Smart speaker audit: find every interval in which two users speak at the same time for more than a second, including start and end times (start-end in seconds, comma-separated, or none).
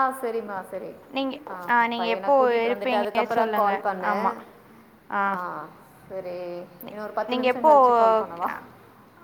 2.0-4.2